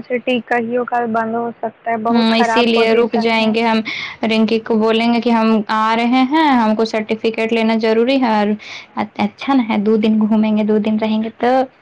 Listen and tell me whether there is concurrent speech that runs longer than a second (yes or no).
yes